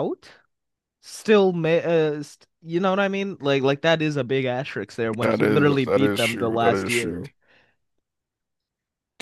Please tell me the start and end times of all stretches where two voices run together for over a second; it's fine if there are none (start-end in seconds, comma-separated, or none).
5.2-7.2